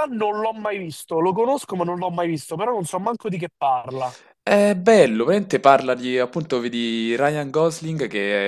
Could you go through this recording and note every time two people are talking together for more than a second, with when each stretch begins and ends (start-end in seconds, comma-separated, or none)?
none